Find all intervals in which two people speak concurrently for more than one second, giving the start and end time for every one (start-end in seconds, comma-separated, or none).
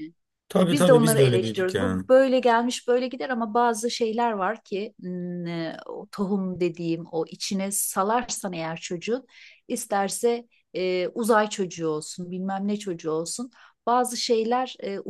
0.7-2.0